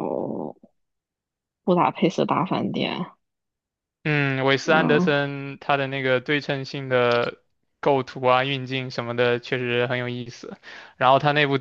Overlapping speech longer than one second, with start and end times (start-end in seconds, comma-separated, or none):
none